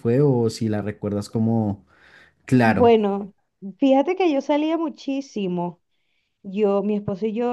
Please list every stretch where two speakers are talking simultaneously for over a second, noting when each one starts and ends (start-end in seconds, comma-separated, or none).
none